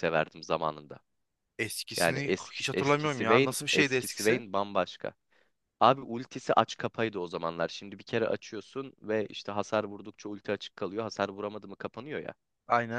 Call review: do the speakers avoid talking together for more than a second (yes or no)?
no